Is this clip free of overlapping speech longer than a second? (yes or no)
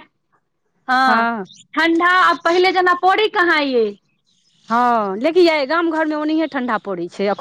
yes